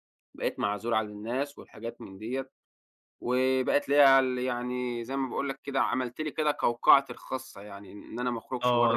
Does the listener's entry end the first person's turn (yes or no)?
yes